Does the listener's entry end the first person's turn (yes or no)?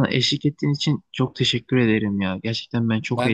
no